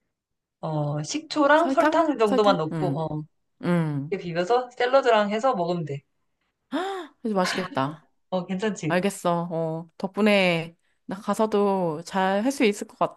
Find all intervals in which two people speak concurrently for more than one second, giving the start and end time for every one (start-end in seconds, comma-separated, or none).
1.5-3.1